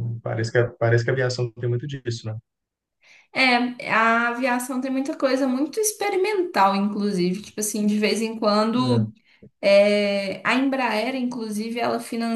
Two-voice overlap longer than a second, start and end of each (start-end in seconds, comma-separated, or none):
none